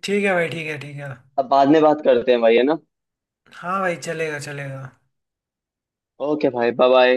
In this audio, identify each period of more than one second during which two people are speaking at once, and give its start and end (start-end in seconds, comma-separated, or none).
none